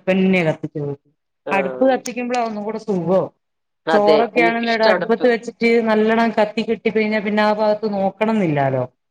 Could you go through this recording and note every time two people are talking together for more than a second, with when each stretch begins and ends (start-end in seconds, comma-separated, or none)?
4.0-5.2